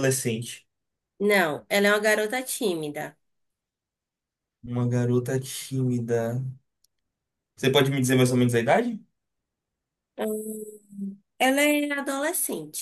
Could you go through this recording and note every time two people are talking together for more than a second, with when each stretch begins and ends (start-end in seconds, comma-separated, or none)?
none